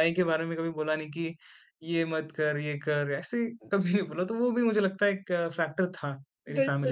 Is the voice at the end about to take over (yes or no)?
yes